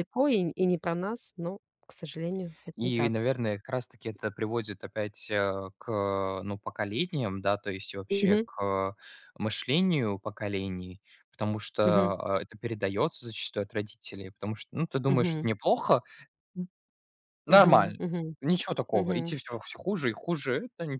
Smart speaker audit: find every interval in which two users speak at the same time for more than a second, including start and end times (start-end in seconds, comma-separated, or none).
none